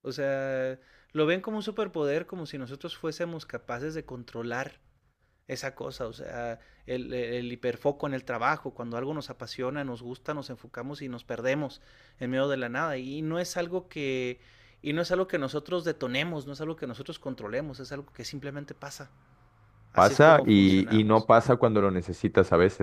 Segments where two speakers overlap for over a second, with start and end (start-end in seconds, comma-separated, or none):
19.9-21.3